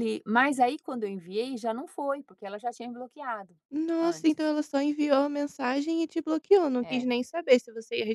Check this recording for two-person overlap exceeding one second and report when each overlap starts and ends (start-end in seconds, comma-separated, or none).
none